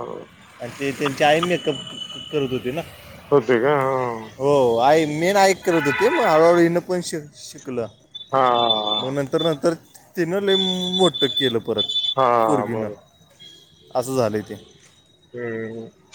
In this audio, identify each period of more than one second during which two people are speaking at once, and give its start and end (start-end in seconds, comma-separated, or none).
none